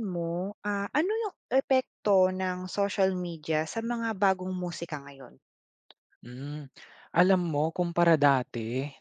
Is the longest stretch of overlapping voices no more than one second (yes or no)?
yes